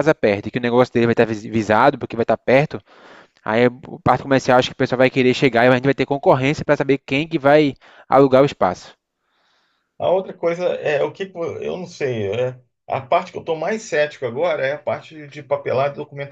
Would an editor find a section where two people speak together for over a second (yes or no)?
no